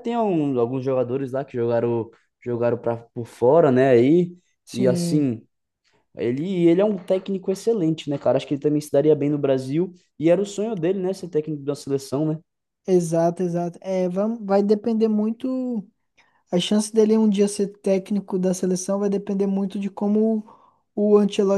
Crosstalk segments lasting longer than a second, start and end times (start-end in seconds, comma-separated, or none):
none